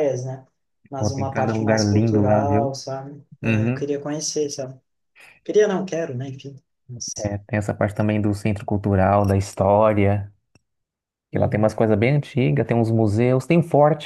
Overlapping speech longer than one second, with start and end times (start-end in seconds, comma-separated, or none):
1.0-2.8